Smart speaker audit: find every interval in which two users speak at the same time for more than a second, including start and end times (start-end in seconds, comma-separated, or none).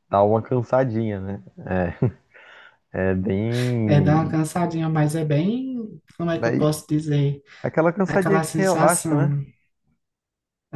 8.1-9.4